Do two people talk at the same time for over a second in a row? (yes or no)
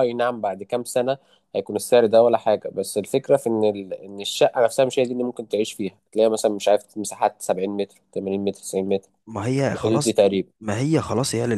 no